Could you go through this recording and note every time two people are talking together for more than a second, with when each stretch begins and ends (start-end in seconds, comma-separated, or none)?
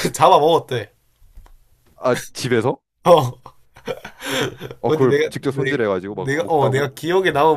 4.9-6.9